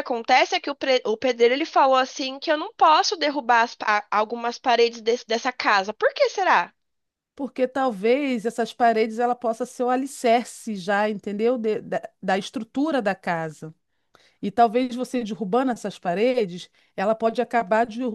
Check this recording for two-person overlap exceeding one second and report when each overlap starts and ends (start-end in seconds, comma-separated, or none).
none